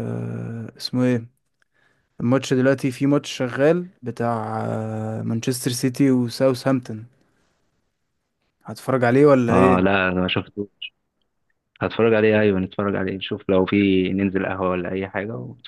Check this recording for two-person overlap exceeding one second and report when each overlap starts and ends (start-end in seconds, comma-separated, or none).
none